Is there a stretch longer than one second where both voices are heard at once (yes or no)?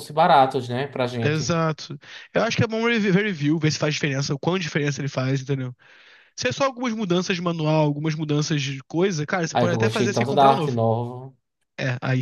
yes